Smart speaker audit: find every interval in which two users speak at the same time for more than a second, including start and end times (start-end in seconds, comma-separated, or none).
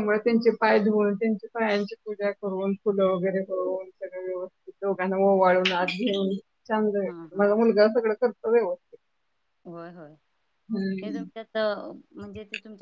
none